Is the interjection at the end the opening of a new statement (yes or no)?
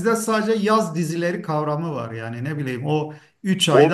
yes